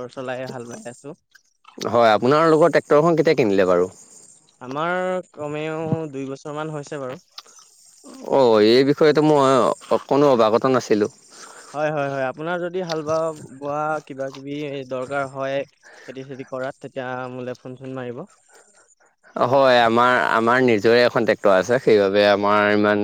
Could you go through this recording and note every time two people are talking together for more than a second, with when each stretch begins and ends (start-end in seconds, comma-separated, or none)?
none